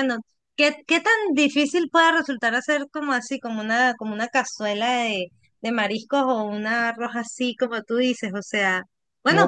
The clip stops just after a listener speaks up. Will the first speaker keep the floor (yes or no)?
yes